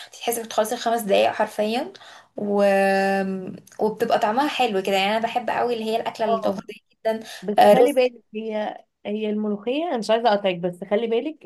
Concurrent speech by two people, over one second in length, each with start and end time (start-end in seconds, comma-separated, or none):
none